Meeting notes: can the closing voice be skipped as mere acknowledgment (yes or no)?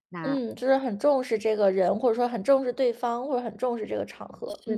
no